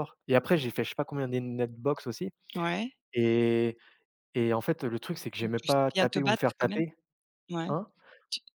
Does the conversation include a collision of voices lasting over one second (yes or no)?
yes